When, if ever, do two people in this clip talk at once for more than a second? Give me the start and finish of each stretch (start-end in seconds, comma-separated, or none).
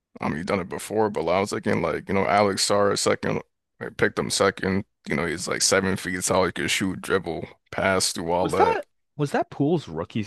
none